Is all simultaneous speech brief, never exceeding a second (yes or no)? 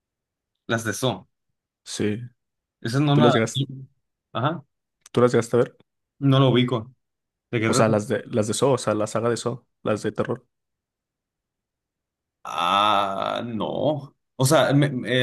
yes